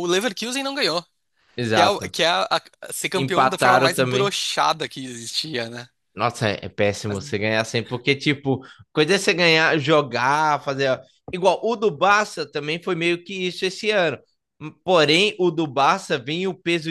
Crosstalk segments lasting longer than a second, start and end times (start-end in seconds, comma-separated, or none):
3.1-4.3